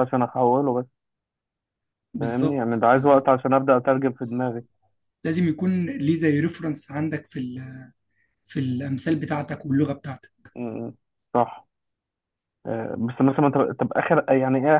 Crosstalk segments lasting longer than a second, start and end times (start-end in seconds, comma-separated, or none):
2.2-3.5